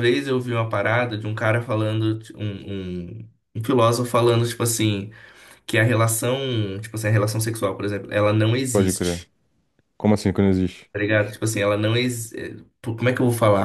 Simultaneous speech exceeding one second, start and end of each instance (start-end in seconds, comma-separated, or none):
none